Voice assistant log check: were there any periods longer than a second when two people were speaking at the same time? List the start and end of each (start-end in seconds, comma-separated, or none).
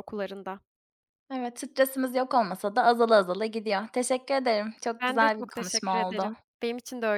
5.0-6.3